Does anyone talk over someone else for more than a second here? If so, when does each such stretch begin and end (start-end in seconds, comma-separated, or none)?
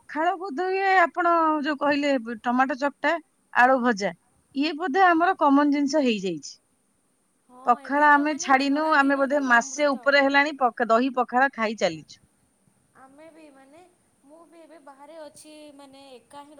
7.7-10.1